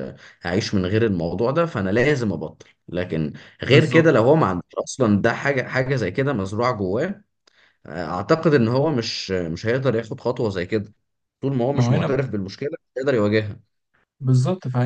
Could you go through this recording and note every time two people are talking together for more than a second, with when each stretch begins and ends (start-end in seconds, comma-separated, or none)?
none